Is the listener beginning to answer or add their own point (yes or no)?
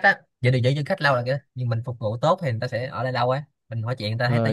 yes